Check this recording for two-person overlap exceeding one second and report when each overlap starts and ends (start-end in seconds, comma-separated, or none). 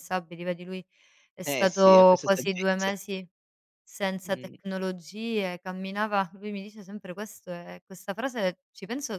1.4-2.9